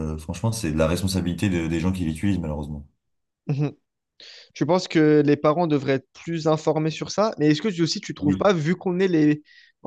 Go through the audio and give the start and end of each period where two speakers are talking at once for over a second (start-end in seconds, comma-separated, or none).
none